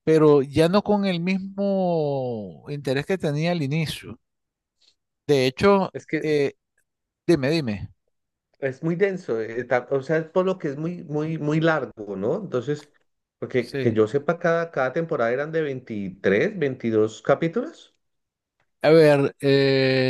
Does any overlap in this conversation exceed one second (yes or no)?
no